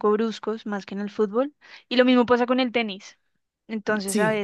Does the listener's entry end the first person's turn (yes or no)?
no